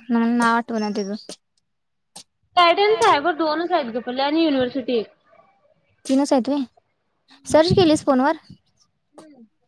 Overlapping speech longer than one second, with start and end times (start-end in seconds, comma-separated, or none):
none